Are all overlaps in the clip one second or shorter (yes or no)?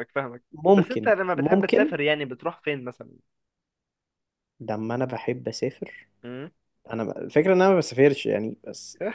no